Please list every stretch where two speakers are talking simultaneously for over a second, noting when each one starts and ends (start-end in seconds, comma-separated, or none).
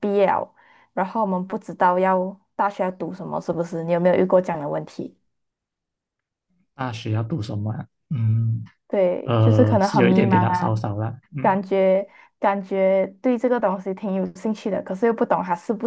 9.2-10.7